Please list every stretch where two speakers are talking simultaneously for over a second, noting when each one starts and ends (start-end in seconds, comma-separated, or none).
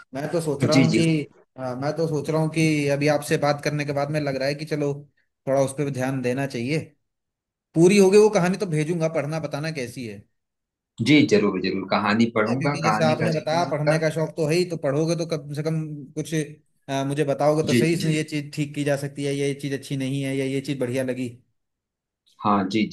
12.5-14.0